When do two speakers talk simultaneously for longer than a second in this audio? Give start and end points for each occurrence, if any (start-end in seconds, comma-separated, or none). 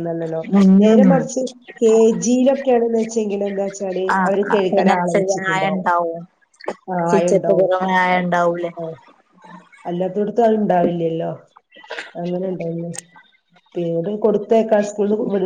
4.2-5.9